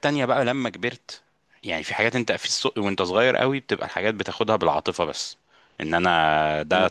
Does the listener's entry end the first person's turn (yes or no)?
no